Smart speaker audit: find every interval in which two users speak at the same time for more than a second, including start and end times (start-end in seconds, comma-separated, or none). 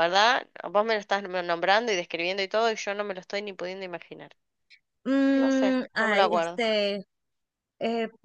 5.3-6.6